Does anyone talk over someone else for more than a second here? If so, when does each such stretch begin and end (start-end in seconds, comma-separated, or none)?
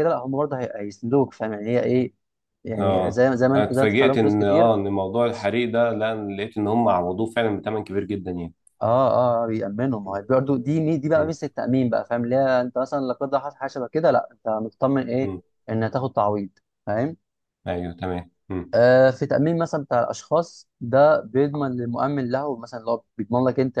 2.8-4.7